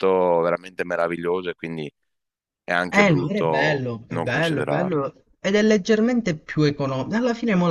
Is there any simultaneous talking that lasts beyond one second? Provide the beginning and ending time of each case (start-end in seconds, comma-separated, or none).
2.9-5.1